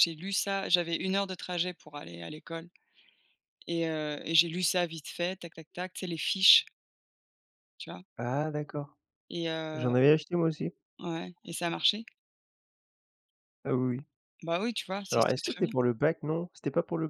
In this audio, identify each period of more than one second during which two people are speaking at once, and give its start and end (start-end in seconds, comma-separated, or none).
none